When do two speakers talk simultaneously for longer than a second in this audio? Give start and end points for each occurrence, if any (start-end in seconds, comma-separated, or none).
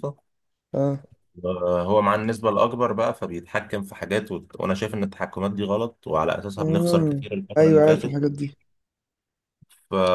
6.6-8.2